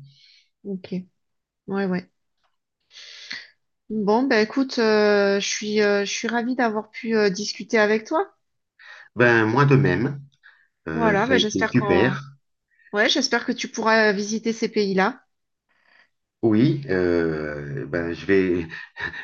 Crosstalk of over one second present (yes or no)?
yes